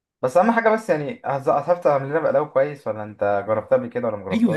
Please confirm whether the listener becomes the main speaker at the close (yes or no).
yes